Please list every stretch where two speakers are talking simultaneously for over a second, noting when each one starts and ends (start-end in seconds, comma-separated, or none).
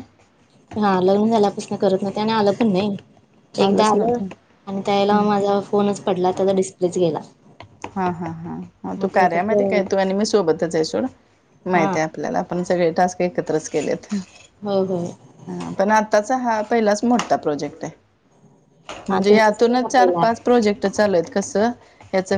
19.1-20.5